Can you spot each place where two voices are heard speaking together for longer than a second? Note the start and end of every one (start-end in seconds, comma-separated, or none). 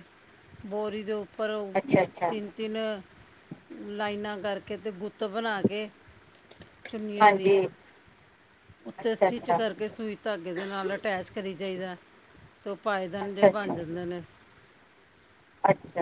none